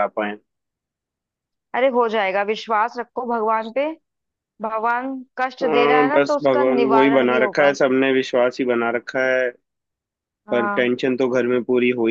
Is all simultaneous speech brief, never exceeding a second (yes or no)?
no